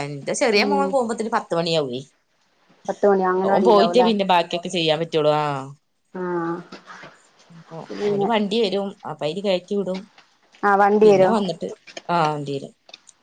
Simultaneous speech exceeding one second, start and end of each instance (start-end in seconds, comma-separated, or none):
none